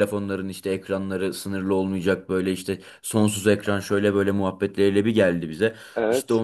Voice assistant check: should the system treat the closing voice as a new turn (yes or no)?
no